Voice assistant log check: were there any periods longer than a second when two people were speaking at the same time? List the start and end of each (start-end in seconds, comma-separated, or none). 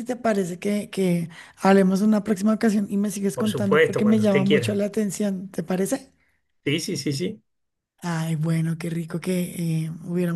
3.3-4.8